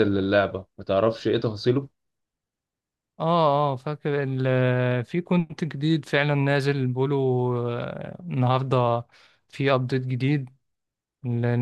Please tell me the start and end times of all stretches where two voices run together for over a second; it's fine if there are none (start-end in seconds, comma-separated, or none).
none